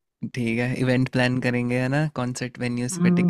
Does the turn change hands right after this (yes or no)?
yes